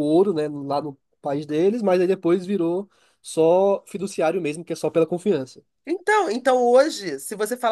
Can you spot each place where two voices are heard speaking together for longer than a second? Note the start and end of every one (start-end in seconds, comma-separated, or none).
none